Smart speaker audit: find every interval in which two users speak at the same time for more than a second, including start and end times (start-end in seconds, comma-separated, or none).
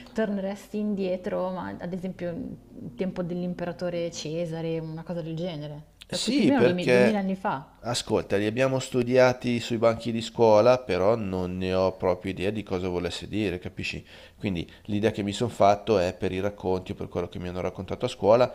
6.1-7.3